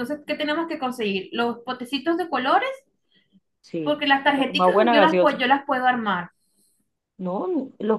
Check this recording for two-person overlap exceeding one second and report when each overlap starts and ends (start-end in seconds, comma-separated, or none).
3.8-5.4